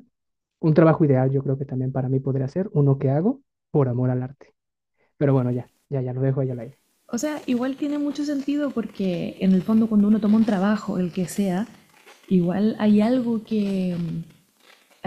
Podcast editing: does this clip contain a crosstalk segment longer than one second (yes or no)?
no